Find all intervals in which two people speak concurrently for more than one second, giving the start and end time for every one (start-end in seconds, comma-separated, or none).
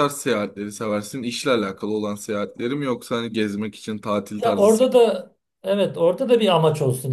none